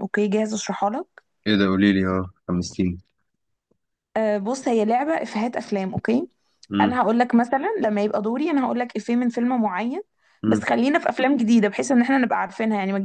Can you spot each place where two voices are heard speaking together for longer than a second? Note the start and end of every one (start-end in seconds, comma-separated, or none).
none